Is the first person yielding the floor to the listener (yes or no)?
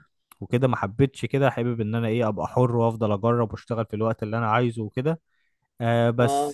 no